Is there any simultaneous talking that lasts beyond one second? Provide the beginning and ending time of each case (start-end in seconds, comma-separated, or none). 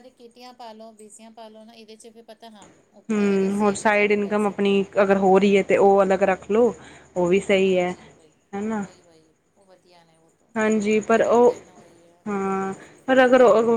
3.1-4.6